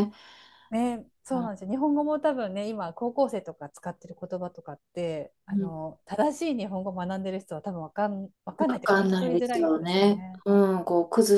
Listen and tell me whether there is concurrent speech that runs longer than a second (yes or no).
yes